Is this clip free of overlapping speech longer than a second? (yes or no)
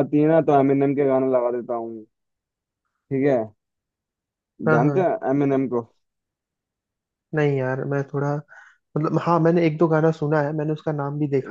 yes